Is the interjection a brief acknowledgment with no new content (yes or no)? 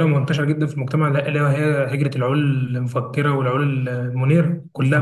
no